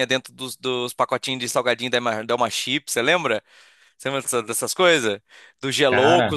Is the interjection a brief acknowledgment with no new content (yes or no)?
yes